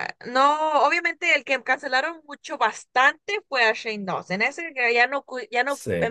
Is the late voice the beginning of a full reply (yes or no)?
no